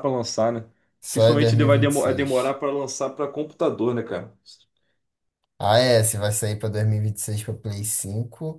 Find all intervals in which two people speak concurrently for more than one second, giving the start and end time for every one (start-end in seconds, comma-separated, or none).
1.1-2.6